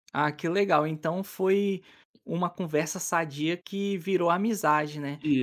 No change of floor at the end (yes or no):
yes